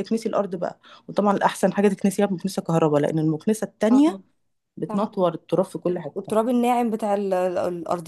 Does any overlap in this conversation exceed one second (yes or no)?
no